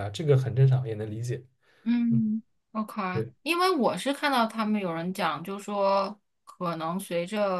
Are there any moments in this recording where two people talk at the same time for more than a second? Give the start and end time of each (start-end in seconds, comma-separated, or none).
none